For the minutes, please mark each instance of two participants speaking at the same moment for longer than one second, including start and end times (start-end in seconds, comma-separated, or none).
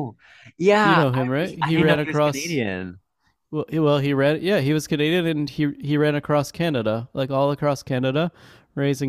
0.8-2.6